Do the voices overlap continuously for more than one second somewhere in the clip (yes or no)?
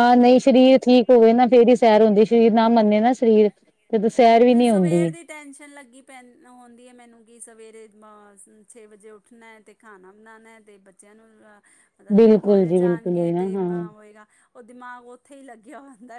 yes